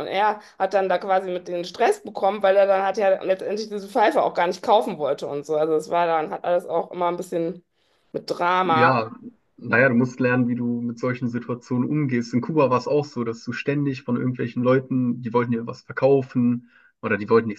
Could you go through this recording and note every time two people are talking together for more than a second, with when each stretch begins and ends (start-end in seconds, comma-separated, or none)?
none